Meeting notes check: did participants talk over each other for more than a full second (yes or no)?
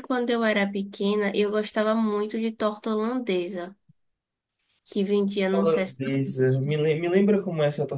yes